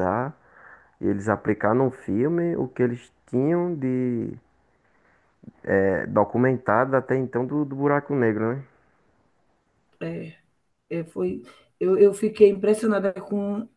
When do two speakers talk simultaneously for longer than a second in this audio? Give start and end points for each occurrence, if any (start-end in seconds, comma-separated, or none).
none